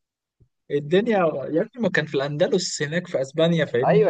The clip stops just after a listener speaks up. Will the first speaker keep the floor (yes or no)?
no